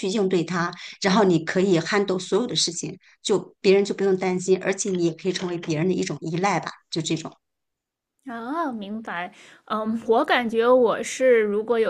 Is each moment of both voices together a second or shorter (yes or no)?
yes